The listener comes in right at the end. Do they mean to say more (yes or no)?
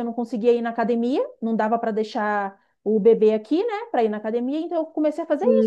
yes